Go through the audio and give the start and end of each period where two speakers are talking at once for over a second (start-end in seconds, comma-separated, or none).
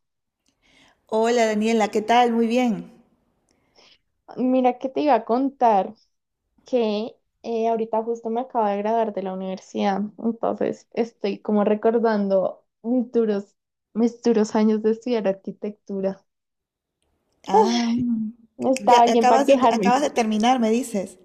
18.8-20.0